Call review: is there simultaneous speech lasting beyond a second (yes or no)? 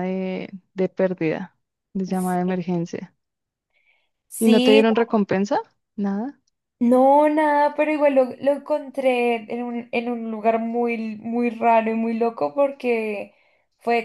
no